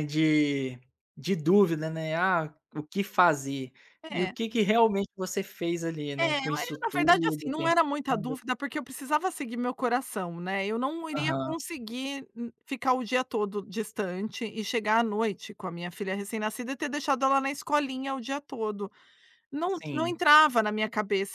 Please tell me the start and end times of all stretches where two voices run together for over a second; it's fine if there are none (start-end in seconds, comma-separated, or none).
6.2-8.3